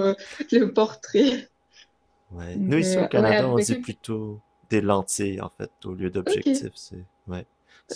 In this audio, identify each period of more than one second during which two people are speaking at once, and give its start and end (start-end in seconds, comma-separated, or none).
2.5-3.9